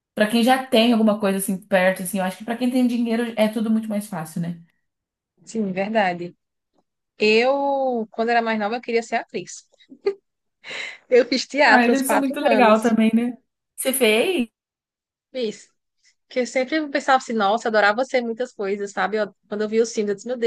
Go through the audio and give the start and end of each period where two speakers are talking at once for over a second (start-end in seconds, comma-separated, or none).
11.6-13.0